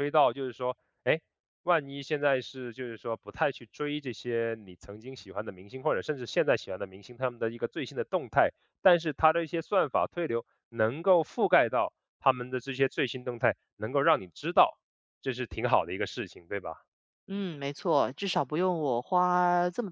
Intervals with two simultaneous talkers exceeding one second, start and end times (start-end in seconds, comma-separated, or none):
none